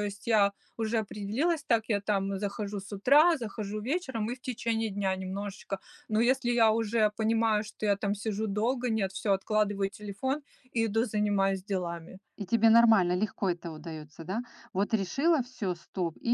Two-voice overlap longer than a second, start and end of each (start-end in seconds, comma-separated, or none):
none